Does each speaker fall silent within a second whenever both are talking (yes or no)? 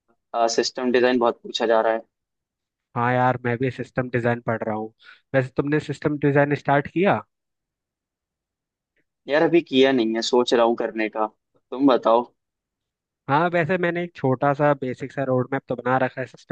yes